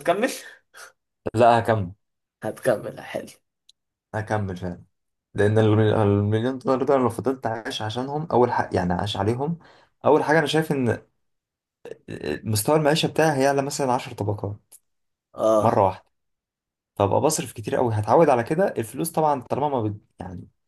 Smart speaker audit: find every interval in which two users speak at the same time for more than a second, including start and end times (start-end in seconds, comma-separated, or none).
none